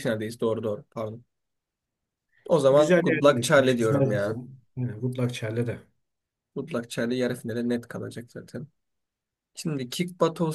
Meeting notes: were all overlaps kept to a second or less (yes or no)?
no